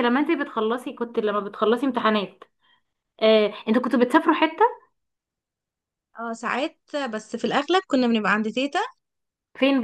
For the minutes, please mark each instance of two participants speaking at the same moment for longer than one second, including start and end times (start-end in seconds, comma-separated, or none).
none